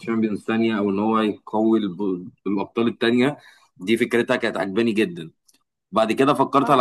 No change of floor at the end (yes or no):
yes